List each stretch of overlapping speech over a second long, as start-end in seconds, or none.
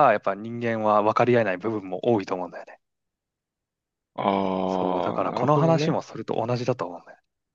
4.7-6.0